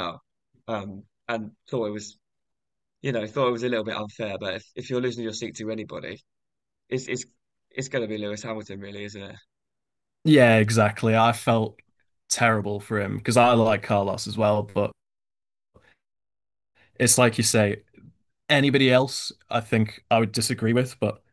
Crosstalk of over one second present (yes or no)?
no